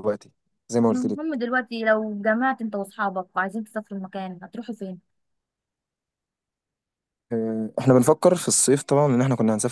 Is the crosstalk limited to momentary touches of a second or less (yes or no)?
yes